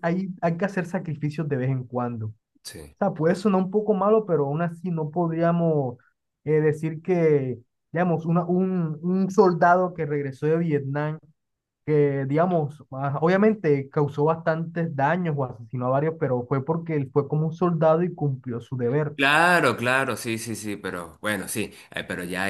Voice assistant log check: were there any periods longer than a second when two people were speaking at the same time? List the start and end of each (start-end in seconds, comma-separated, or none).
none